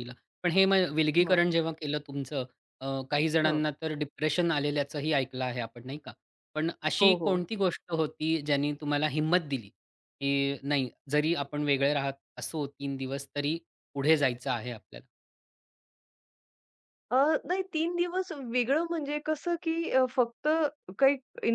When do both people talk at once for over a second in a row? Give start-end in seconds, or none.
none